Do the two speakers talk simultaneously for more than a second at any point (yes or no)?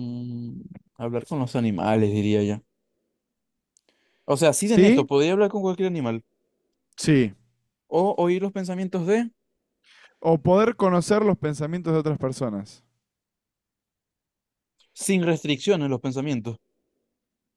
no